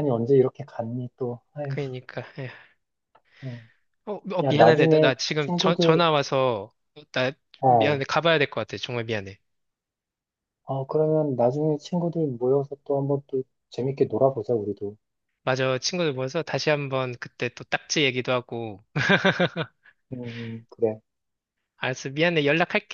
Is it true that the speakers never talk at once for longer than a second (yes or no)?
no